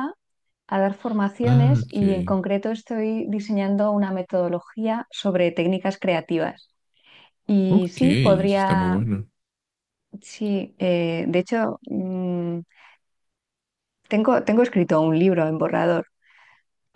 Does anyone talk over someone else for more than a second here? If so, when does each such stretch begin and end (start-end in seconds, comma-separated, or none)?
7.7-9.0